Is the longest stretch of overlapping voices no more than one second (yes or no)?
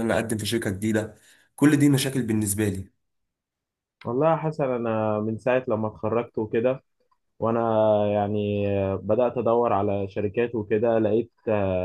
yes